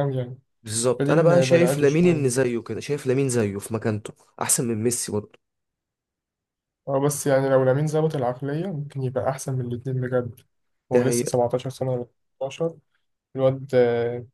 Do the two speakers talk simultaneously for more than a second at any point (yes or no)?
yes